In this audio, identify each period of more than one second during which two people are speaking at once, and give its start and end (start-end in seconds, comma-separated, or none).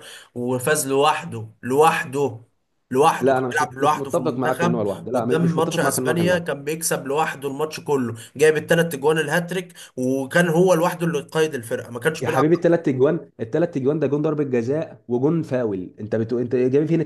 3.2-6.5